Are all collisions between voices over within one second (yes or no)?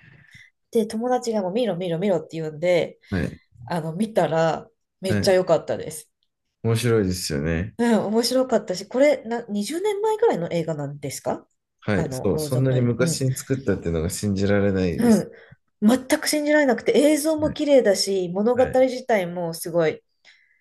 no